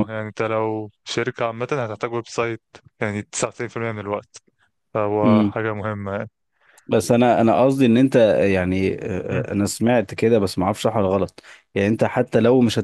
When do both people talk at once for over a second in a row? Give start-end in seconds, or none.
none